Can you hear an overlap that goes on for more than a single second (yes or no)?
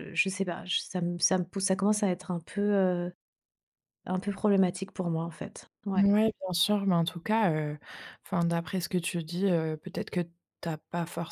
no